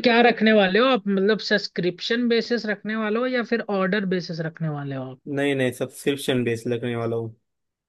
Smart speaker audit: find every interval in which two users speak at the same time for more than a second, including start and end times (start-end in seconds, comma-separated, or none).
none